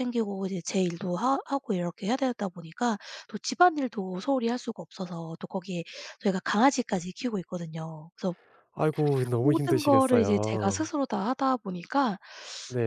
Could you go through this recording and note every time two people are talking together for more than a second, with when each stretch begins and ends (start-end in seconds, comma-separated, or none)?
9.4-10.9